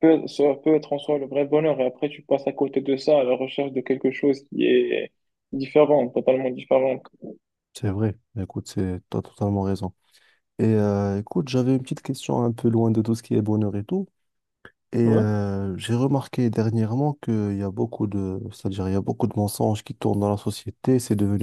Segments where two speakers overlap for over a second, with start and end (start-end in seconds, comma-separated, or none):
none